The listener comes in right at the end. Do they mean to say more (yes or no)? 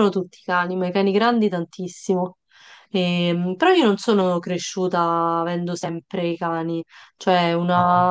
no